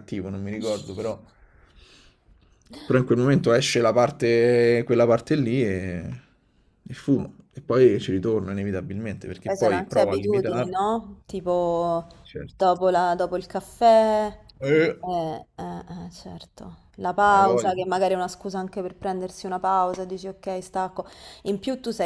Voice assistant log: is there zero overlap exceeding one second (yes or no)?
no